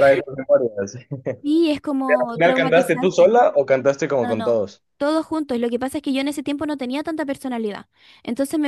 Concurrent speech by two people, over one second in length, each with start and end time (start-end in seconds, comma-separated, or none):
2.1-3.3